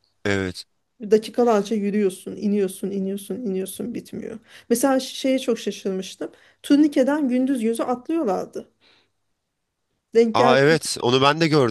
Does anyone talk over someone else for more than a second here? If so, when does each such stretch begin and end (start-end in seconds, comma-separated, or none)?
none